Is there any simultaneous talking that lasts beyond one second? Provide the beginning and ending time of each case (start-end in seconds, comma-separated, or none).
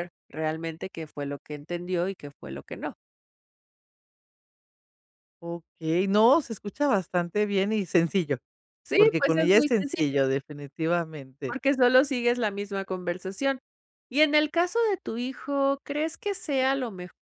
8.9-10.2